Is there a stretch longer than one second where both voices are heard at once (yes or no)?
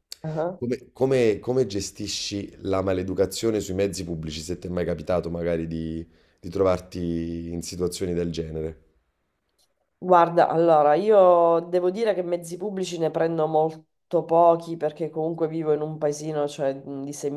no